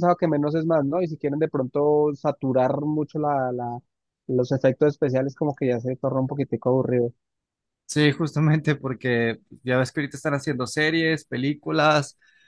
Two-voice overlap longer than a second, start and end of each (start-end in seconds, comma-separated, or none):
none